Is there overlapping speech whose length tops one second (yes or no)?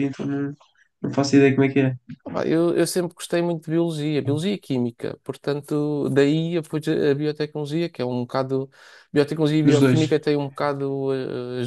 no